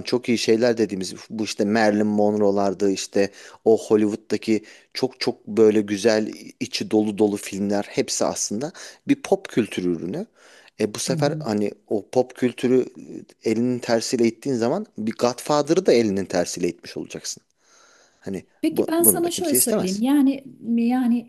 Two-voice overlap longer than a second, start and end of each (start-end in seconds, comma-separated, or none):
18.6-20.0